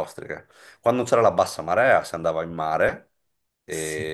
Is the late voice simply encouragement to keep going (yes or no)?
yes